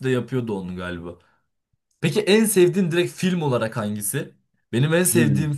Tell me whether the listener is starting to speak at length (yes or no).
no